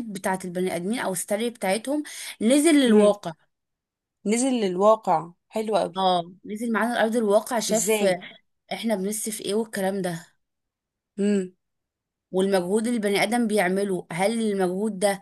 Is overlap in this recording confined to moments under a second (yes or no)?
yes